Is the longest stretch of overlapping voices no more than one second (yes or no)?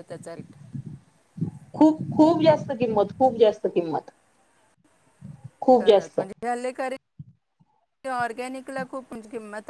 yes